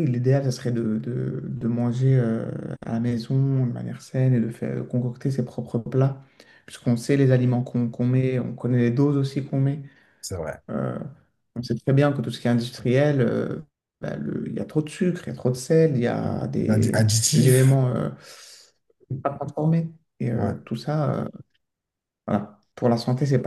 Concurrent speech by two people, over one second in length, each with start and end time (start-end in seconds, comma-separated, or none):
16.2-17.8